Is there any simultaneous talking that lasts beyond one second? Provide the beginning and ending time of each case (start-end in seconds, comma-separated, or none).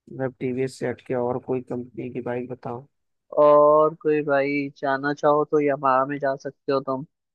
none